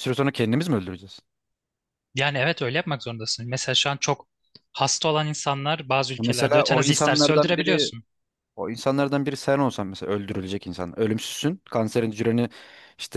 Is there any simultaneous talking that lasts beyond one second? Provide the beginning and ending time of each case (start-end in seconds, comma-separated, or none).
6.2-7.9